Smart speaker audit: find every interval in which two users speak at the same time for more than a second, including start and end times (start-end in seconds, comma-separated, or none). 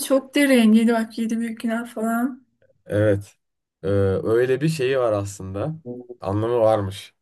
none